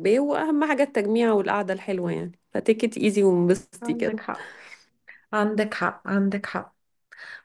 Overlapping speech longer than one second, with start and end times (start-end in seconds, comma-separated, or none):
none